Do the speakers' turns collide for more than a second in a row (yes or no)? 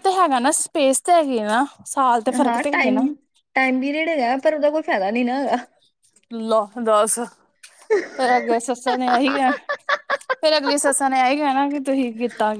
no